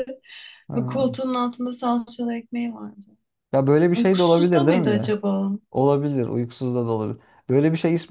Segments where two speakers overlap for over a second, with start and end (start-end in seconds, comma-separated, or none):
3.9-5.2